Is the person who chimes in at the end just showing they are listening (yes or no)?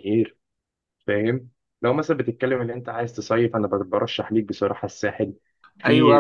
no